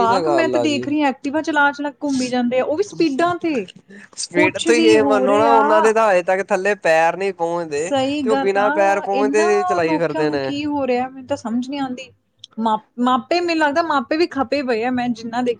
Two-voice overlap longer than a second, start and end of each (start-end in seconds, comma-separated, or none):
4.3-5.9, 7.8-10.5